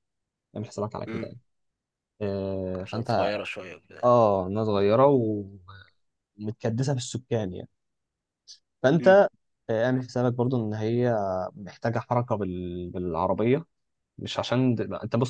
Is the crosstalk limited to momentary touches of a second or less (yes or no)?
yes